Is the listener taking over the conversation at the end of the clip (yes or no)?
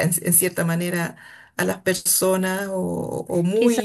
yes